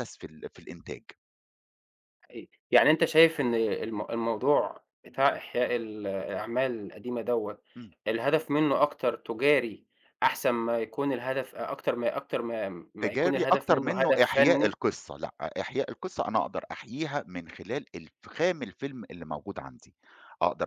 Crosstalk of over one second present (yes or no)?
yes